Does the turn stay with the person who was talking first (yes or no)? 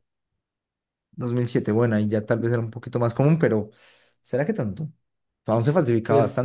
yes